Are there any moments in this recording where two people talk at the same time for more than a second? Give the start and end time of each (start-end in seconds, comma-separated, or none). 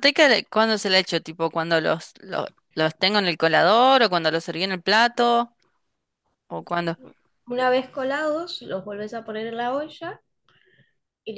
none